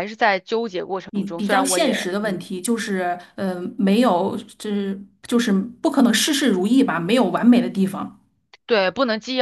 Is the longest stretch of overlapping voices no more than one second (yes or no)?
no